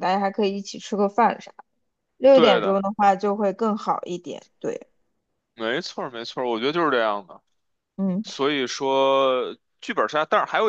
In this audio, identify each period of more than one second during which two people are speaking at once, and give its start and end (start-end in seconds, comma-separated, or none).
none